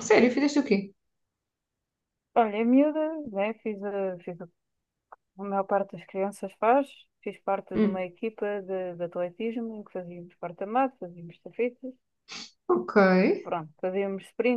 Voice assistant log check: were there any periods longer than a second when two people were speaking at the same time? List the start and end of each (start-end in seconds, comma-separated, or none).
none